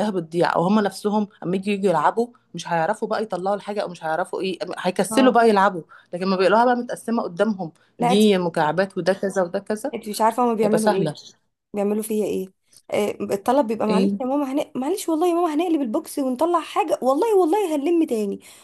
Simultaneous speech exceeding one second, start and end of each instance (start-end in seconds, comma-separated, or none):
none